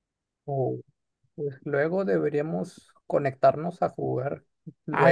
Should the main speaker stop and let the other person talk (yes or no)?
yes